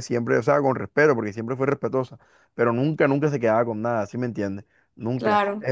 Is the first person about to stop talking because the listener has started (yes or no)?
no